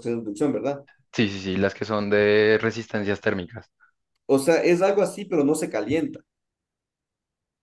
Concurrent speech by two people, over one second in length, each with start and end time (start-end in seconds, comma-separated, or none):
none